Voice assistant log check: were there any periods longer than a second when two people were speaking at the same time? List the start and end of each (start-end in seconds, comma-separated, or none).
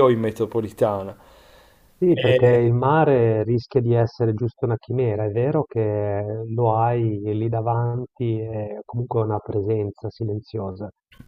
none